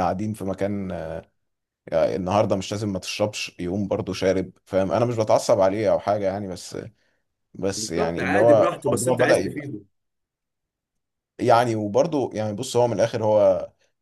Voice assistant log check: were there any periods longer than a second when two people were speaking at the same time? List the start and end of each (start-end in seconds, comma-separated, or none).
7.8-9.7